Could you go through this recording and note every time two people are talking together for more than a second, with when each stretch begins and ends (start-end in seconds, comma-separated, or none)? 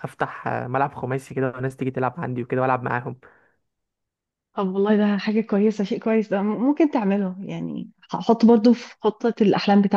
none